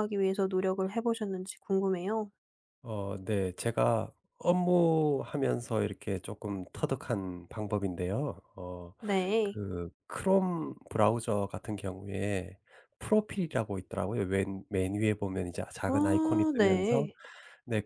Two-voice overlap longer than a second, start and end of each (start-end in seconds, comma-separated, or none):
15.9-17.1